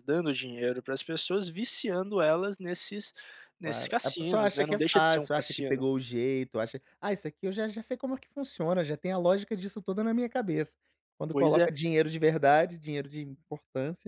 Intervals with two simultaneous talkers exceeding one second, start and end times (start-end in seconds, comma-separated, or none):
3.6-5.9